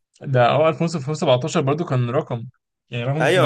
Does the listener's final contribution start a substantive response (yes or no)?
yes